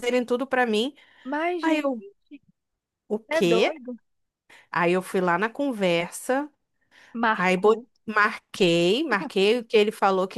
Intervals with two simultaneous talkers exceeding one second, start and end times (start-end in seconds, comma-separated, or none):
none